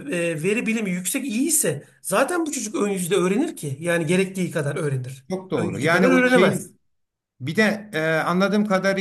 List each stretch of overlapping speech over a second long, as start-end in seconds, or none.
5.3-6.7